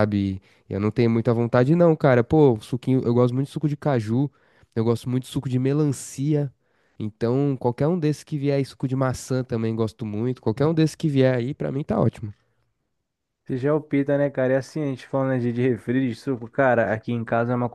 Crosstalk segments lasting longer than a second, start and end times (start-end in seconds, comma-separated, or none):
none